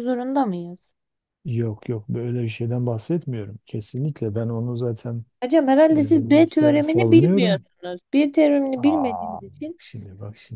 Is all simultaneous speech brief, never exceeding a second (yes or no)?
no